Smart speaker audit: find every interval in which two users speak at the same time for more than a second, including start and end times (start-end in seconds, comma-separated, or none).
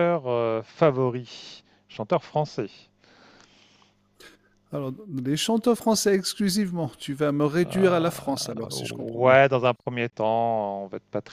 7.6-9.4